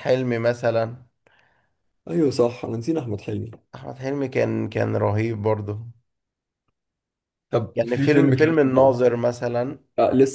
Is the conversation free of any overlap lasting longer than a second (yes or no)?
no